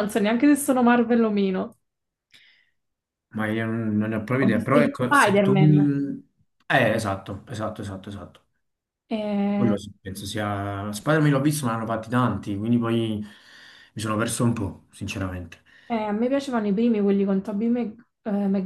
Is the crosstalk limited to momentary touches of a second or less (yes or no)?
no